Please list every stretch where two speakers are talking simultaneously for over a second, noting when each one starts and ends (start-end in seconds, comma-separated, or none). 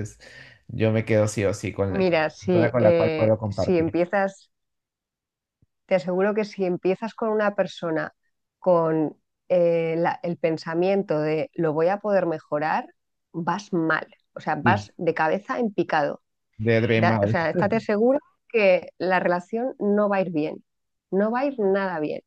1.9-3.9